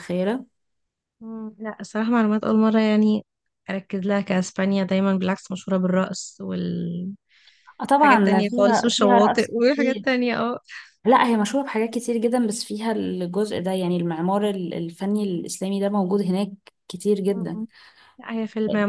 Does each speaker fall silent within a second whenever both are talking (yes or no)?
no